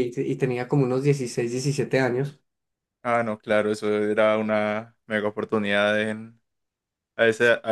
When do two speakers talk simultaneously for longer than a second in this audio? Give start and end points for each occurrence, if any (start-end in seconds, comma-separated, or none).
none